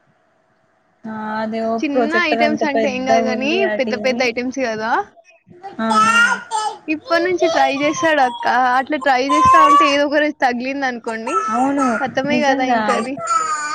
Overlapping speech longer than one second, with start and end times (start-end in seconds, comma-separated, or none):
1.8-4.2